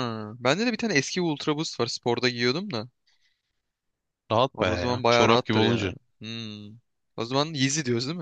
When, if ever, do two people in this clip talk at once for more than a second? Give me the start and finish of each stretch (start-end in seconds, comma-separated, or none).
4.5-5.9